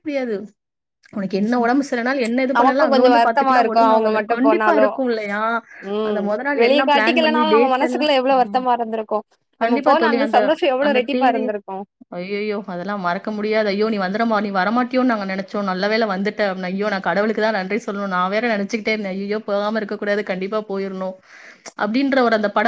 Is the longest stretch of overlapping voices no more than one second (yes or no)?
no